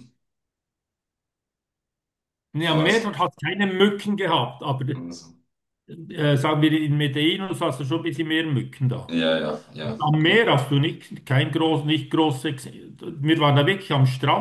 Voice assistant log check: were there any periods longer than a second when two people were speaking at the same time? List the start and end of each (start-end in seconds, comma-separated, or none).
none